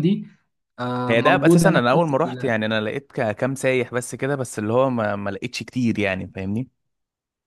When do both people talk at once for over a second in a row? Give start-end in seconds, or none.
1.1-2.5